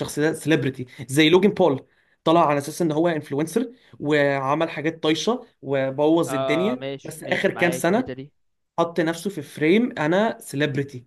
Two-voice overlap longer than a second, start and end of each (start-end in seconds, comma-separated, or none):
6.3-8.2